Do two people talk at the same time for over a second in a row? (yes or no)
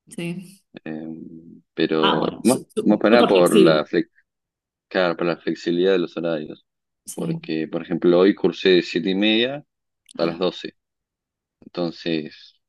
yes